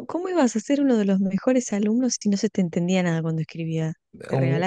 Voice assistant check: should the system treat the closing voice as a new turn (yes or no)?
yes